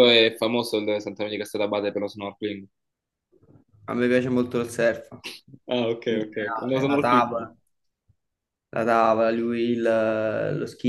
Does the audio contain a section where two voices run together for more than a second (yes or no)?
yes